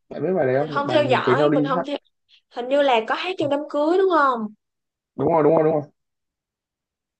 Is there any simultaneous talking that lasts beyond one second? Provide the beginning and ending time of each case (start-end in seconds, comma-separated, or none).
0.5-1.9